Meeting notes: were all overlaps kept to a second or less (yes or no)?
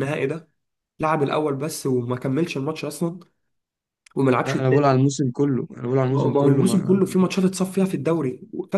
no